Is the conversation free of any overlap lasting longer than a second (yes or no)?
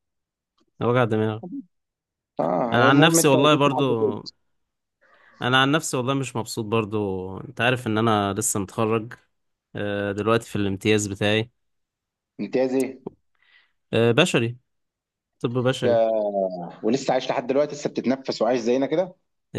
no